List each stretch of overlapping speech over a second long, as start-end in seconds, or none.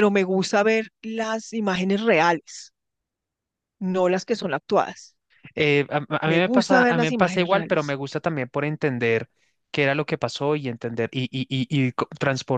6.2-8.0